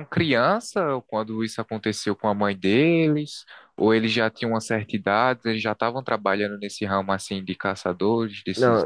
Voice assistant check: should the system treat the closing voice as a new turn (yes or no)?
yes